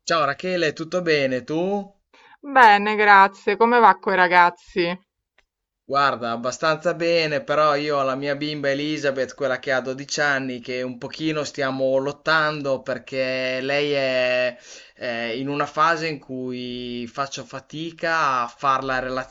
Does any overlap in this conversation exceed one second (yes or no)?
no